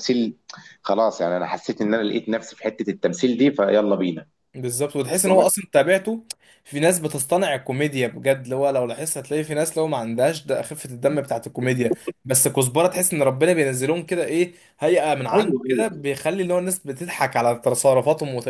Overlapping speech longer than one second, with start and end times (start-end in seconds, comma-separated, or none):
none